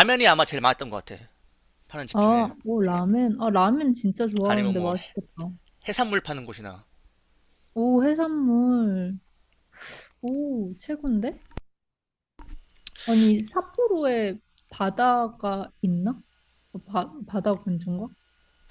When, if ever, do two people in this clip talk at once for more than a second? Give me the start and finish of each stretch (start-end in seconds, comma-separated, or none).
none